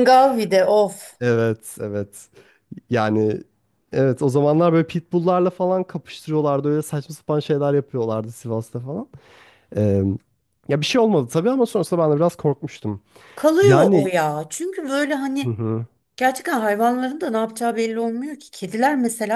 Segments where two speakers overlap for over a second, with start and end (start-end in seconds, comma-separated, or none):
none